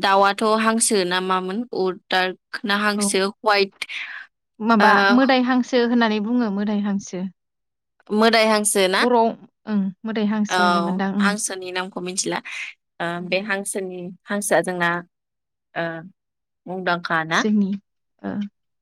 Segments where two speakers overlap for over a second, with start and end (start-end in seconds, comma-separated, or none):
none